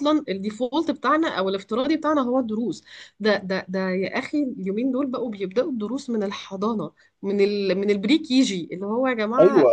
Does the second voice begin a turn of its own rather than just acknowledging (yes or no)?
yes